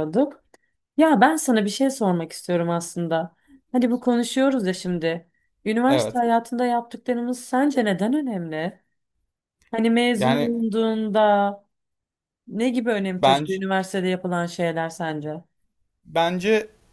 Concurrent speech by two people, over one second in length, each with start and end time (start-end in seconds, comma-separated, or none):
none